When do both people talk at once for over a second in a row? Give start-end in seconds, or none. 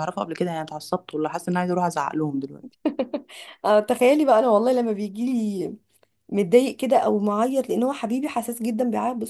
none